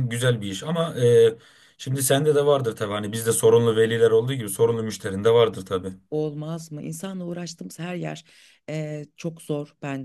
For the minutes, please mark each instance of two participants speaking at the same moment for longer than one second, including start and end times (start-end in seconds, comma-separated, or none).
none